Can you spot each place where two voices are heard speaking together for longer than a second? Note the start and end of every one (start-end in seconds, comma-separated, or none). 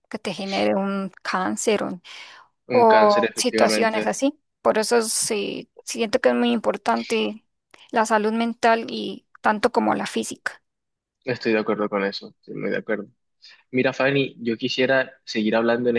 2.7-4.1